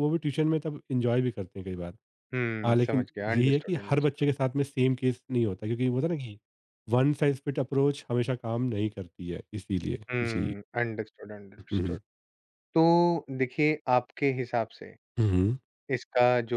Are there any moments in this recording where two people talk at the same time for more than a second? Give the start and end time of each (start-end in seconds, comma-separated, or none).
2.7-4.3